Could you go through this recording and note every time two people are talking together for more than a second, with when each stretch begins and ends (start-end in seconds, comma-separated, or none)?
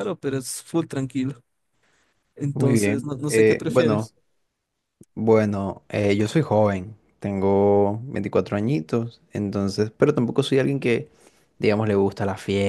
2.5-4.1